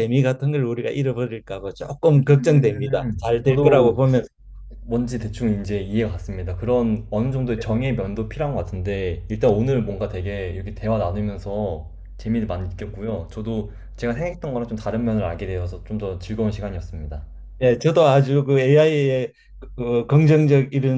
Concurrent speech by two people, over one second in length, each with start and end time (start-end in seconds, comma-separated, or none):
2.2-4.0